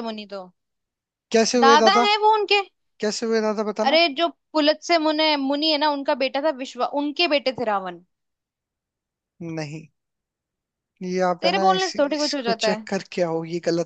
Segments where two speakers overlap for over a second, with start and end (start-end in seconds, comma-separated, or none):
11.4-12.9